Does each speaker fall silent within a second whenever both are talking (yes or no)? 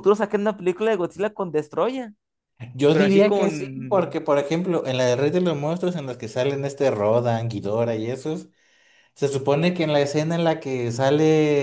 no